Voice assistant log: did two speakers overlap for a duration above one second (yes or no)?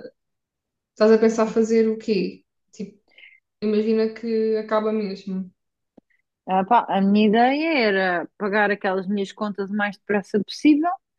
no